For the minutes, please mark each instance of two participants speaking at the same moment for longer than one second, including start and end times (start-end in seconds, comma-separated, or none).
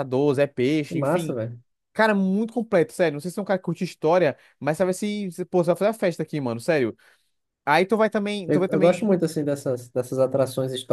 none